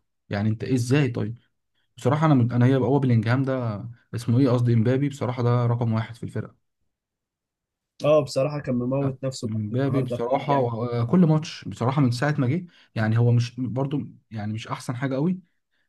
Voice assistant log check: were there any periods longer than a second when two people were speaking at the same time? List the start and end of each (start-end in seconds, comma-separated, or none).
9.0-11.2